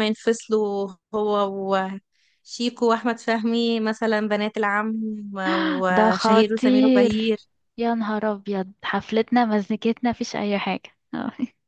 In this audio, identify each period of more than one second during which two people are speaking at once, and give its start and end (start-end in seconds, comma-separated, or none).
5.9-7.4